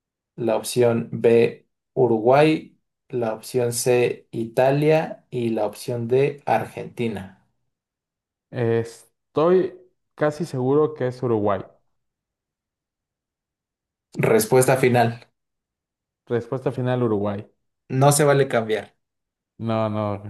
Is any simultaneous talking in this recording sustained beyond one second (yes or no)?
no